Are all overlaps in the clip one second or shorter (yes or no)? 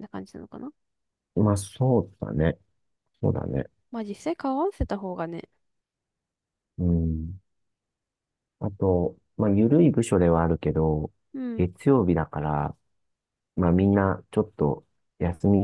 yes